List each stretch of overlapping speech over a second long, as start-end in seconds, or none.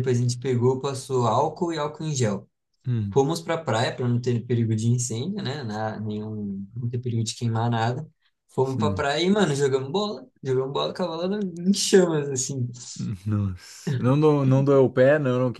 none